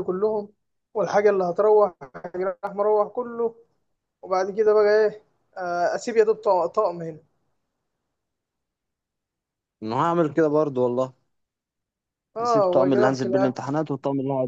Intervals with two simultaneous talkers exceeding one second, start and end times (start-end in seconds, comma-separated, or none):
12.4-13.7